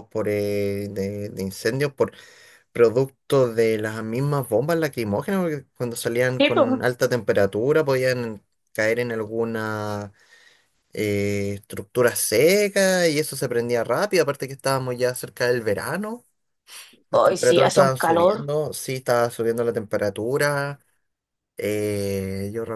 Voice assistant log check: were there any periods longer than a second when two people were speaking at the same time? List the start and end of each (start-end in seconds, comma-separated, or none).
17.1-18.5